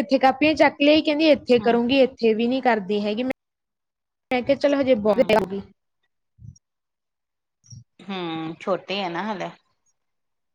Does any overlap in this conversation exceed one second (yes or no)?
no